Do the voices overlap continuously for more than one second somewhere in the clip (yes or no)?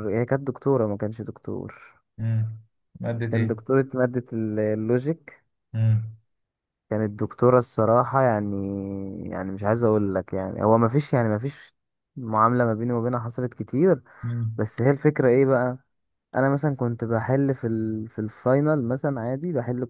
no